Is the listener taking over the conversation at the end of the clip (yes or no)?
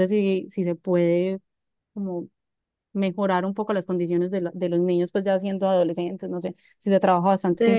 yes